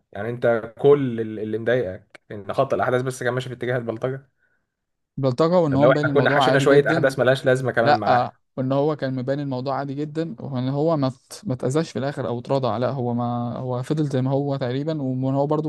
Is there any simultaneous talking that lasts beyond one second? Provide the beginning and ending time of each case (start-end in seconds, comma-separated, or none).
5.7-7.1